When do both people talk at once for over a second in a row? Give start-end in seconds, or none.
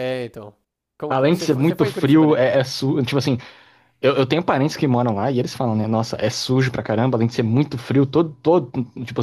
1.1-2.4